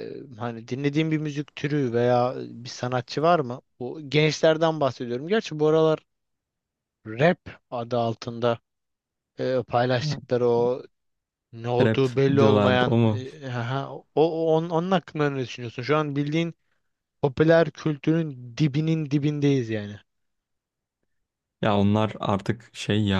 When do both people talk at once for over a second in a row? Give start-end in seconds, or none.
11.8-13.2